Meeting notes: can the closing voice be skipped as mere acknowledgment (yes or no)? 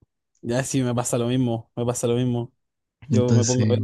yes